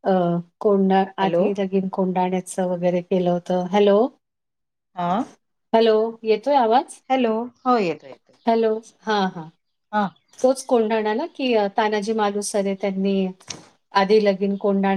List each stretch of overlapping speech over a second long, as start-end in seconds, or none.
none